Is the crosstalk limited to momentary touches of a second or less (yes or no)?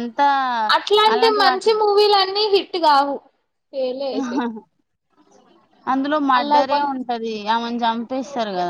yes